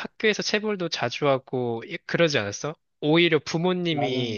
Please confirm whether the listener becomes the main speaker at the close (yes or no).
no